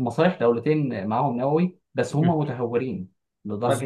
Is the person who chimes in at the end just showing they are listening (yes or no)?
yes